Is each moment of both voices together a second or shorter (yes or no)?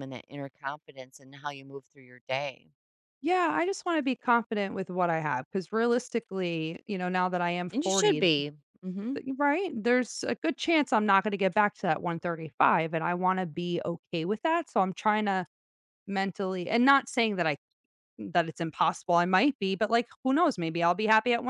yes